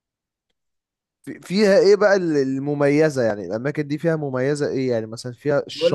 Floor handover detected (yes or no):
yes